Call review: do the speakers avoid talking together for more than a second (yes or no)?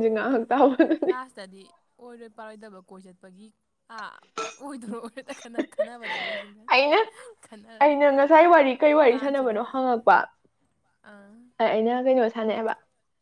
yes